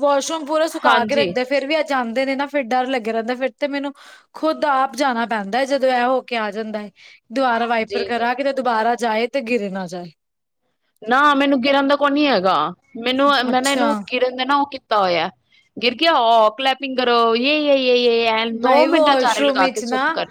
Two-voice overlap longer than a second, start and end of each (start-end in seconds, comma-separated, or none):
none